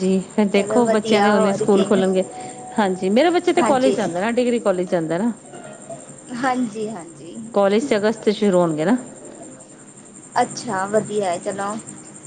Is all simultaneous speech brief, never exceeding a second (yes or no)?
no